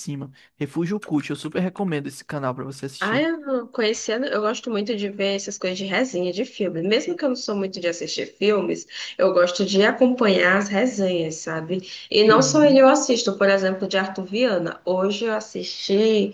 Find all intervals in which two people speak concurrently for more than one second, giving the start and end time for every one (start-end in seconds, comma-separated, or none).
none